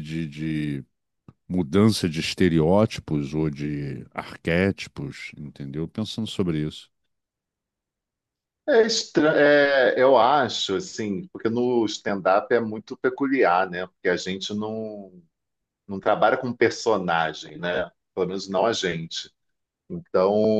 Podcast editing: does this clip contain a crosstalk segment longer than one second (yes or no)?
no